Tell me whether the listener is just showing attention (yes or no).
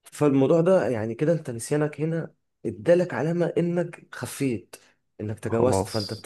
yes